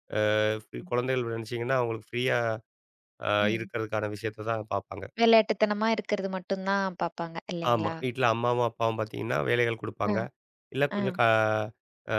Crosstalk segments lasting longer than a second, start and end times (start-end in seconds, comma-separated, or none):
none